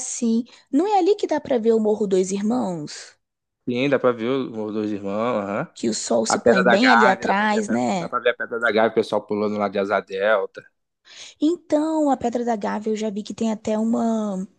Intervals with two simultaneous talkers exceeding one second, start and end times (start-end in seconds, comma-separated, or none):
6.3-8.1